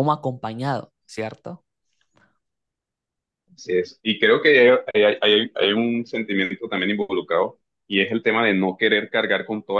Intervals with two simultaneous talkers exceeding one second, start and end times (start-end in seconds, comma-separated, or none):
none